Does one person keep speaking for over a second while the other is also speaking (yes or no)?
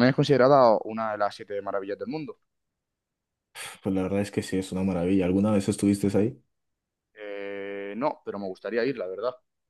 no